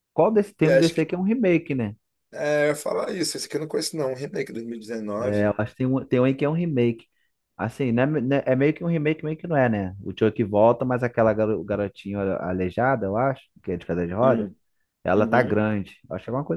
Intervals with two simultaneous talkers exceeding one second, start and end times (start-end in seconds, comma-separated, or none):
none